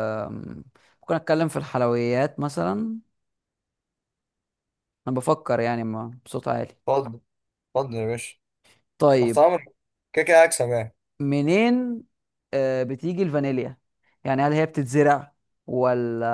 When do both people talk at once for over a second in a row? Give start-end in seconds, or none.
none